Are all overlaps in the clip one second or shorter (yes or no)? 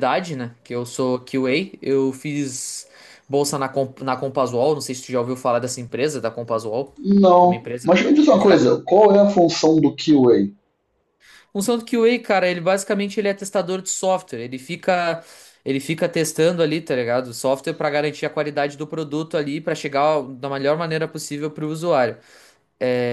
yes